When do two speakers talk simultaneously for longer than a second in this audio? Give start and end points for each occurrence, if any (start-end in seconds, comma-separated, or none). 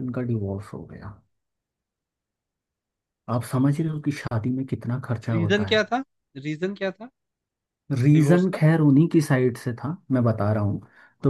none